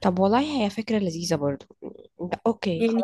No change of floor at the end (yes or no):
no